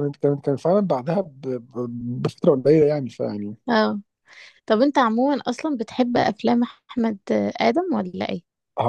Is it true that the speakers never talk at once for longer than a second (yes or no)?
yes